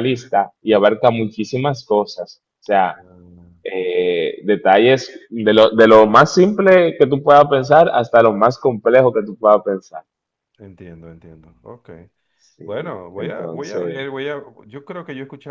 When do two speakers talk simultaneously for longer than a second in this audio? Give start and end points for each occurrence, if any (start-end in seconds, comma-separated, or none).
12.6-14.0